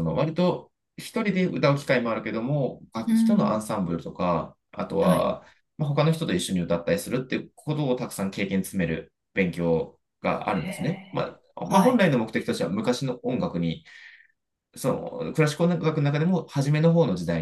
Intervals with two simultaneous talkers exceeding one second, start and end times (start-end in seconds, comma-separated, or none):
10.5-12.1